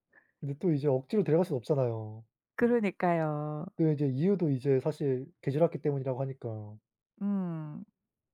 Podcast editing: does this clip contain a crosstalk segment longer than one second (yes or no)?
no